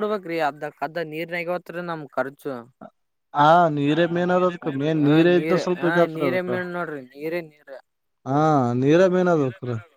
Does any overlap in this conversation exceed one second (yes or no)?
yes